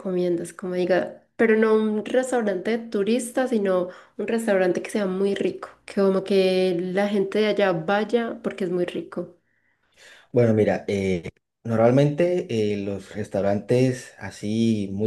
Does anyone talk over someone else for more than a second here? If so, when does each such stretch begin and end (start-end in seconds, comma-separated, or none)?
none